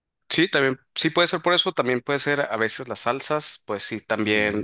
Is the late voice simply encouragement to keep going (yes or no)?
yes